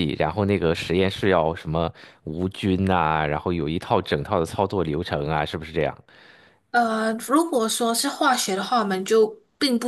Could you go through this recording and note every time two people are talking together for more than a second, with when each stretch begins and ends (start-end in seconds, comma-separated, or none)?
none